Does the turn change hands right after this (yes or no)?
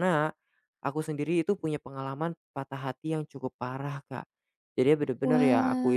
no